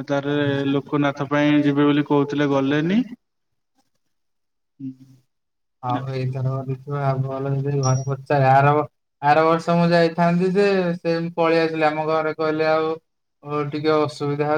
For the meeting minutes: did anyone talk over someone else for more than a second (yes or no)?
no